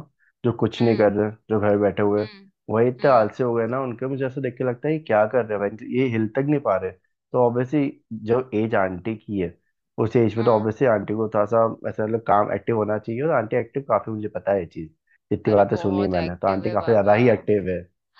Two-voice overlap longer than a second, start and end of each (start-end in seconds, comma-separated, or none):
15.5-17.2